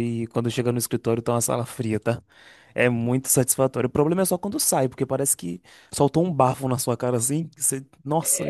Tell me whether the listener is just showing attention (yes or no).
no